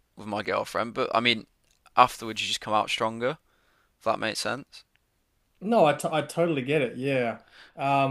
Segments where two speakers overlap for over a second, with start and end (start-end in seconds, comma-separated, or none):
none